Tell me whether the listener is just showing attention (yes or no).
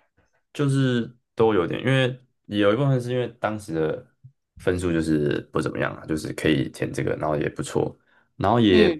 yes